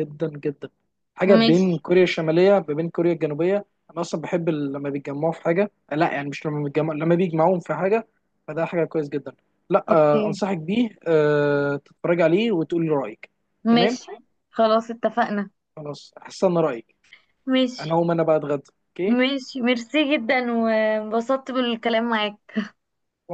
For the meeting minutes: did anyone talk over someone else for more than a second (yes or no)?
no